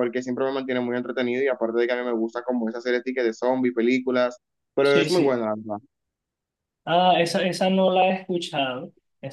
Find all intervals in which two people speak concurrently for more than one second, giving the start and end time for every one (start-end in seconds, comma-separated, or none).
none